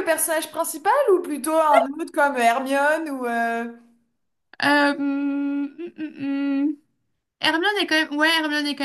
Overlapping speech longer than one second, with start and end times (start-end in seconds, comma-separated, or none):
none